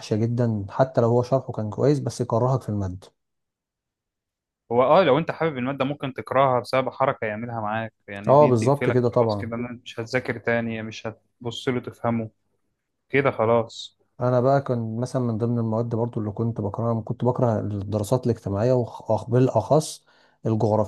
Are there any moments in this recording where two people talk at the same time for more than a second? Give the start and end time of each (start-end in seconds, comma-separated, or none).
8.3-9.5